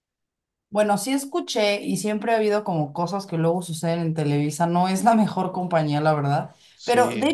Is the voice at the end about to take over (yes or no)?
no